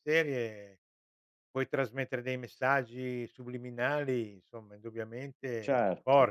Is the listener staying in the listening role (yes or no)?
no